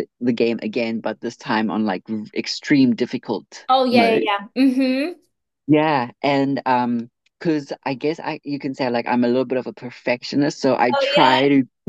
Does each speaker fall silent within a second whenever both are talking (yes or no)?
yes